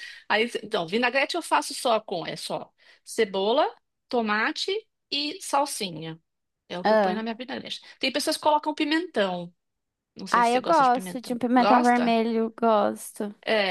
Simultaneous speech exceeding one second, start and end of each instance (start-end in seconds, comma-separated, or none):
10.3-12.2